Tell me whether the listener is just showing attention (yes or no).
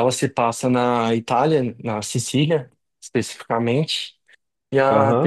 no